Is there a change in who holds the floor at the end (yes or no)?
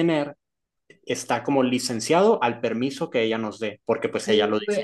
yes